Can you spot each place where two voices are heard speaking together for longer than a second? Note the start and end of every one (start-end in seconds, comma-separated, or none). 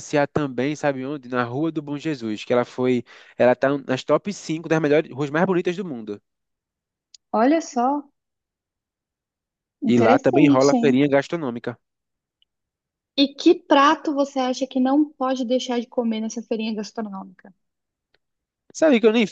9.8-11.1